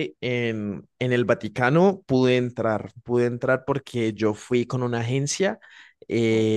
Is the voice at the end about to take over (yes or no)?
no